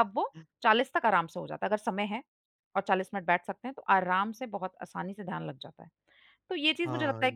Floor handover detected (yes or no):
no